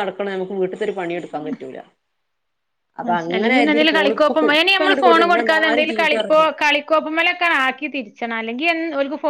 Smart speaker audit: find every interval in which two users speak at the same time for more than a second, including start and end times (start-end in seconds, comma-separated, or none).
4.5-6.5